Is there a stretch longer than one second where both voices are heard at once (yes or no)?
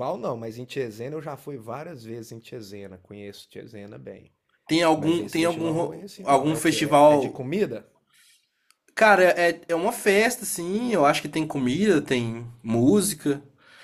yes